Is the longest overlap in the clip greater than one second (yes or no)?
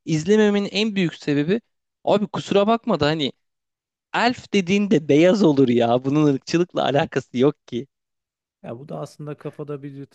no